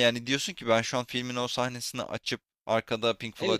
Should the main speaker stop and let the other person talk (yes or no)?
yes